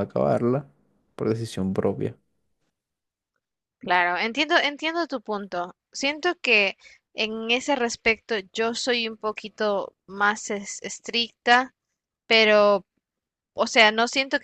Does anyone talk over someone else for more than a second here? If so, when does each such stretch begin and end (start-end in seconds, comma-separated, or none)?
none